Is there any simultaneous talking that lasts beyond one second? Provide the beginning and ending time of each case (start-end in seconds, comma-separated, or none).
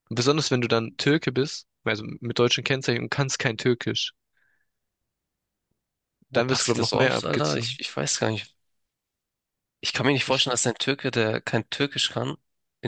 6.3-7.8